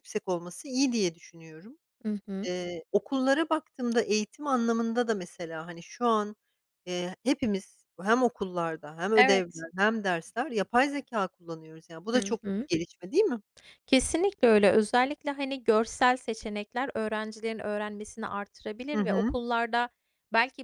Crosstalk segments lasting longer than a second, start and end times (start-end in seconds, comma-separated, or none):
none